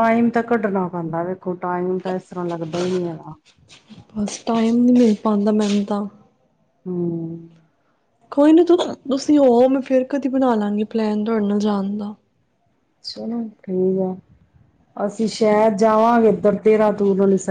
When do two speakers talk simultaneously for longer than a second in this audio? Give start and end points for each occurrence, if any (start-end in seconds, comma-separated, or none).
none